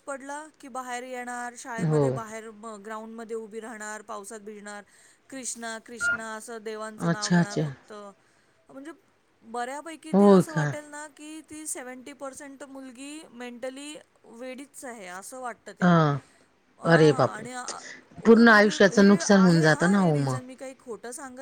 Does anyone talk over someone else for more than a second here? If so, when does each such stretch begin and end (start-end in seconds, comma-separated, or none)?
18.2-20.4